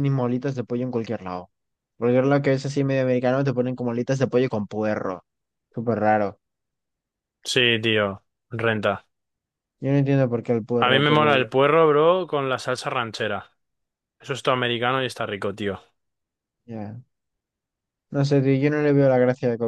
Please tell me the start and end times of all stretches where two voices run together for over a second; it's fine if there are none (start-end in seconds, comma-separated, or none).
none